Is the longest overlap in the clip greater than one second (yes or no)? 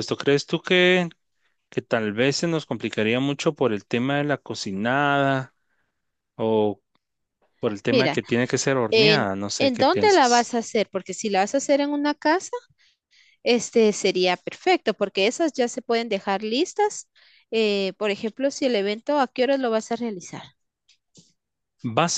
yes